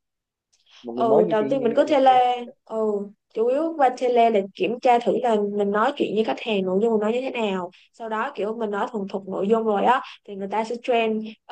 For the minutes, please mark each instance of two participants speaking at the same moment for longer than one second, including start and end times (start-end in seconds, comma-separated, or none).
0.9-2.5